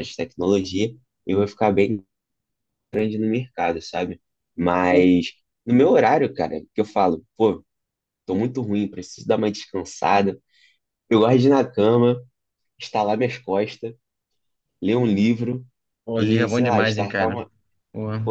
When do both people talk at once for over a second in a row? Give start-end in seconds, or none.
16.1-17.4